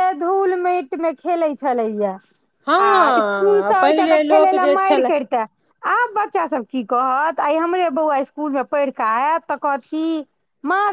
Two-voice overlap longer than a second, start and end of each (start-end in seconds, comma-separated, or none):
2.7-5.1